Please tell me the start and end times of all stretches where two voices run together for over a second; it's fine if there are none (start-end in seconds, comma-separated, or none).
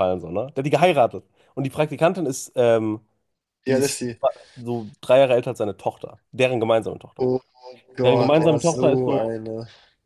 8.0-9.3